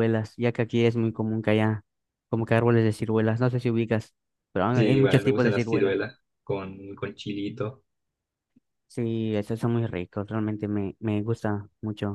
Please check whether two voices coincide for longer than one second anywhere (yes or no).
yes